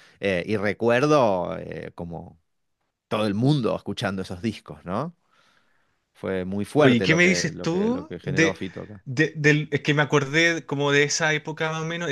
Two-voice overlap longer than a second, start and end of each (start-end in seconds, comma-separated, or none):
6.8-8.6